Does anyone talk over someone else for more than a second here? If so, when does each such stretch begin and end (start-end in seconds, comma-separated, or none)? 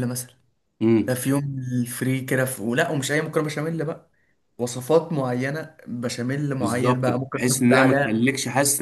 6.6-8.3